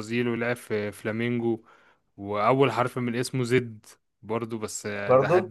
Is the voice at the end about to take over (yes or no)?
no